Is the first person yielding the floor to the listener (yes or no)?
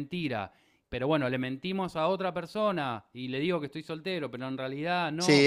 yes